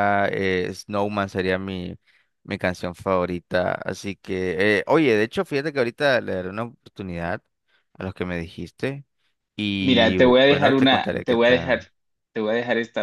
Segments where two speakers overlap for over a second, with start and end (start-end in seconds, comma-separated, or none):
9.8-11.8